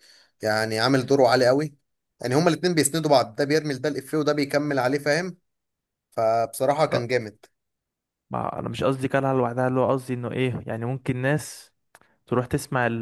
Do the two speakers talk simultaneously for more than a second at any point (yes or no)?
no